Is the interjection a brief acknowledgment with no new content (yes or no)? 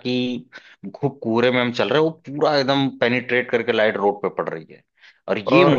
yes